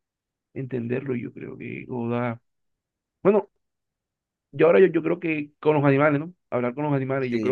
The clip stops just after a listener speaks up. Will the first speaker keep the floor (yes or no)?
no